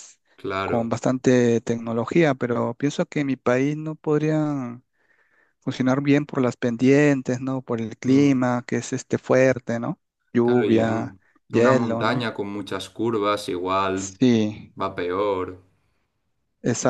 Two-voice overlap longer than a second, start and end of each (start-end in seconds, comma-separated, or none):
10.4-12.3